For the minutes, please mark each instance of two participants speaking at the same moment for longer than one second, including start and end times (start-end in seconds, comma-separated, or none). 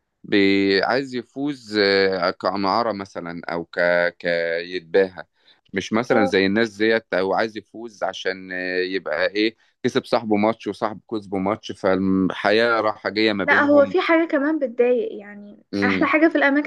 none